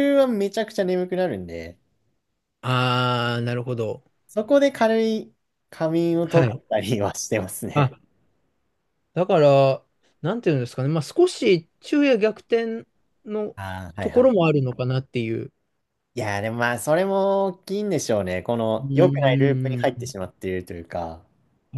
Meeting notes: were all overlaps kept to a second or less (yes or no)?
no